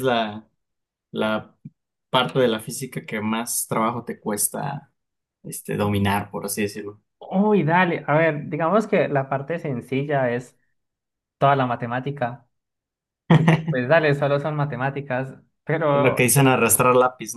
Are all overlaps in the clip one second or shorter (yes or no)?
yes